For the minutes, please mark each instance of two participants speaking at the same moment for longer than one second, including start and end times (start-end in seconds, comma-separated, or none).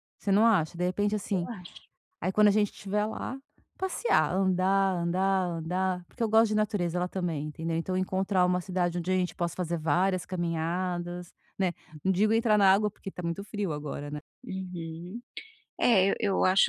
none